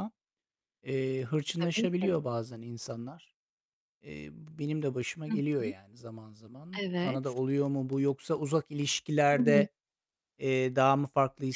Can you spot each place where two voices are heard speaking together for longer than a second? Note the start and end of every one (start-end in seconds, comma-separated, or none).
none